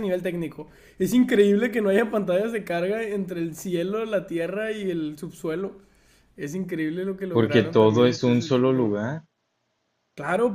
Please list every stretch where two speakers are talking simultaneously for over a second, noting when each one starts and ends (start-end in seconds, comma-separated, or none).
7.3-8.9